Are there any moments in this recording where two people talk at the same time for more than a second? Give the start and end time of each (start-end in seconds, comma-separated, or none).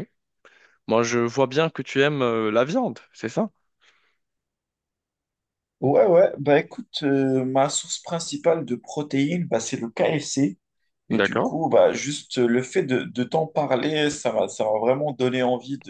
none